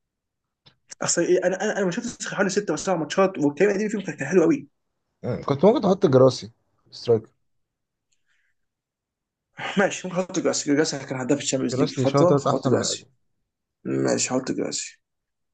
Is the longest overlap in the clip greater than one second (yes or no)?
yes